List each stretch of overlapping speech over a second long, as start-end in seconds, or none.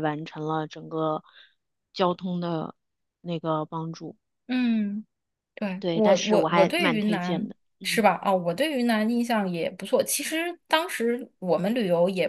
5.8-8.1